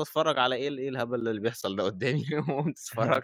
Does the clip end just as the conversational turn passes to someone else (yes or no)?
no